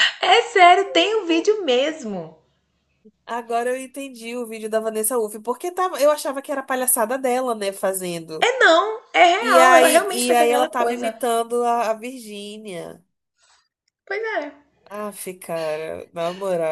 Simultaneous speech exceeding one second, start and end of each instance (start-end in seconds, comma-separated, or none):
9.5-11.2